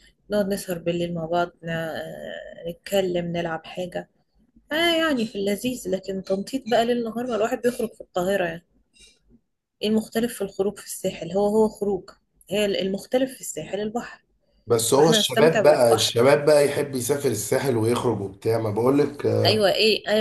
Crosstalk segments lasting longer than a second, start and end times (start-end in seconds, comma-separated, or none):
14.9-16.2